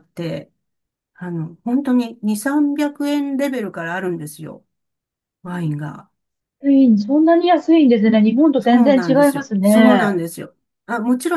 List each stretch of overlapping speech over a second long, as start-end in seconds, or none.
8.6-10.2